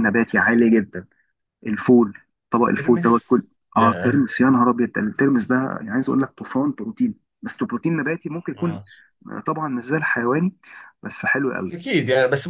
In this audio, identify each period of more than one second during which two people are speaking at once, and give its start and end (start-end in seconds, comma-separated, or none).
2.8-4.2